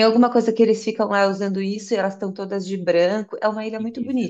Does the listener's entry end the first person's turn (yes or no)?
yes